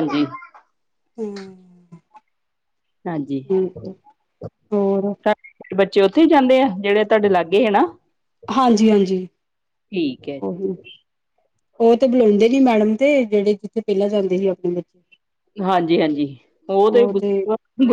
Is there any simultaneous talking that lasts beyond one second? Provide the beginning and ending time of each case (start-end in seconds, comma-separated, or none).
none